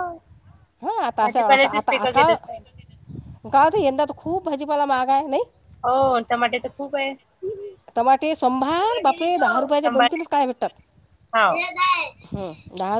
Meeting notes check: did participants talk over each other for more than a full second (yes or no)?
yes